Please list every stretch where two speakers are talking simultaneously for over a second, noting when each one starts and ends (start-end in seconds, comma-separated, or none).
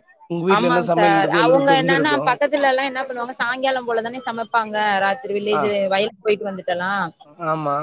0.6-2.2